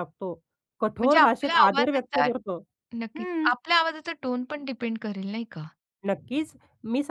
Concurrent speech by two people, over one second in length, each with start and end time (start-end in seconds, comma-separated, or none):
1.0-2.3